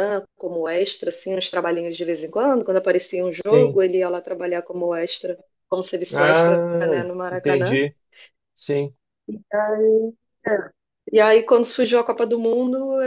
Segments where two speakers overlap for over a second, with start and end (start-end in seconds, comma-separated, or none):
6.1-7.8